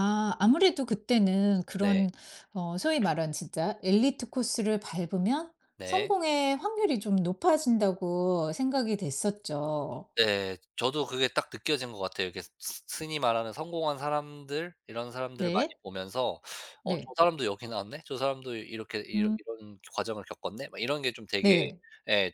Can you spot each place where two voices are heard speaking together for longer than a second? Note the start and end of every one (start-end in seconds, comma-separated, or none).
none